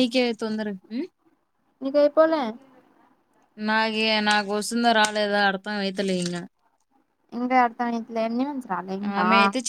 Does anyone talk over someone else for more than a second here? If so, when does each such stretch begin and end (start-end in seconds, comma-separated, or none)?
none